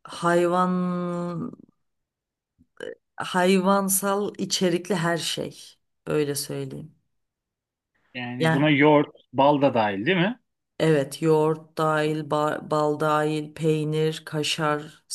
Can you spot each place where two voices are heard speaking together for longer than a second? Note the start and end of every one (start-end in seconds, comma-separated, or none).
none